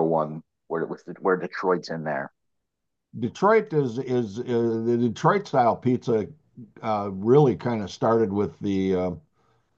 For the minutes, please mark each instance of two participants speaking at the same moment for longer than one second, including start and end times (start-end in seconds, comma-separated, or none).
none